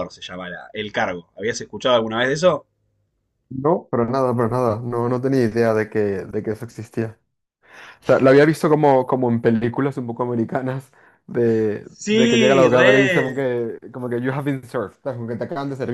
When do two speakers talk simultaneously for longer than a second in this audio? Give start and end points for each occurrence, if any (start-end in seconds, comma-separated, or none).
11.8-13.4